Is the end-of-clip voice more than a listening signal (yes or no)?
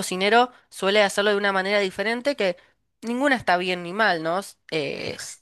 no